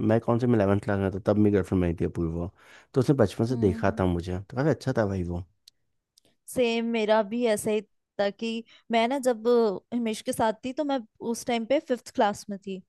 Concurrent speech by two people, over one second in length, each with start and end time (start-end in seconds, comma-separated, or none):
none